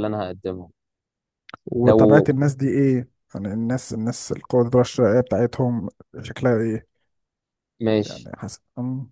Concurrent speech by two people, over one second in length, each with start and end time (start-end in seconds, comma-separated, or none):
none